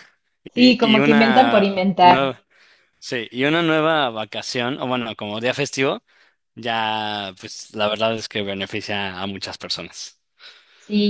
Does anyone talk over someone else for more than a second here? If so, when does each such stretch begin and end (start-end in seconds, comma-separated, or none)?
0.5-2.2